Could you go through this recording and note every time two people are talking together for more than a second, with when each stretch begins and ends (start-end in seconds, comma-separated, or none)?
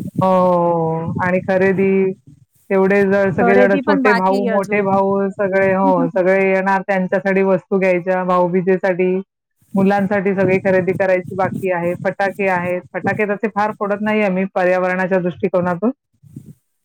3.4-5.0